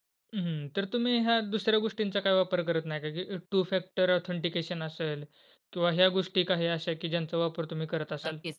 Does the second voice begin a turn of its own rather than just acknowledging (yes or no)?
yes